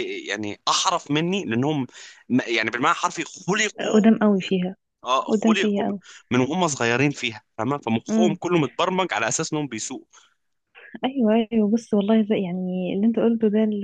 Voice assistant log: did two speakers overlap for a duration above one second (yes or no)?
no